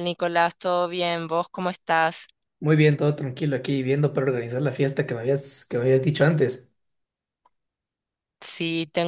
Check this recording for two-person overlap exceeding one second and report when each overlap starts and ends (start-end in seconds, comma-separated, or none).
none